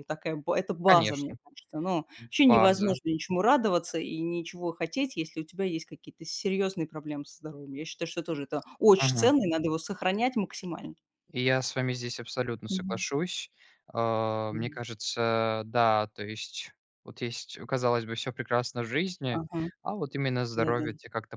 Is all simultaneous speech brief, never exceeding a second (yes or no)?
yes